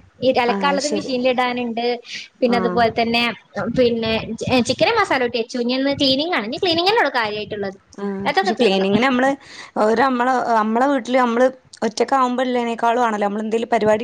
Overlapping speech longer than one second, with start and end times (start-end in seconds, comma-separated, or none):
none